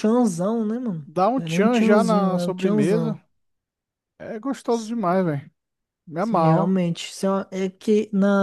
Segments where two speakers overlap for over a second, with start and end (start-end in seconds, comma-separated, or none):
1.1-3.2